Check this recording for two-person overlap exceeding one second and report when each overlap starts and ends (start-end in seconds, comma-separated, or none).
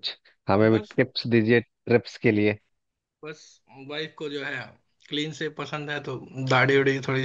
none